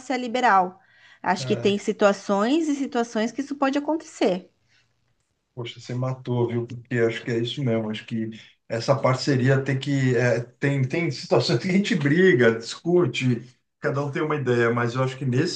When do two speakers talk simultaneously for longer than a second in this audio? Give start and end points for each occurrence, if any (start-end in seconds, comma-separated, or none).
none